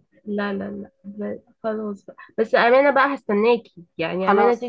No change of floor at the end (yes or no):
yes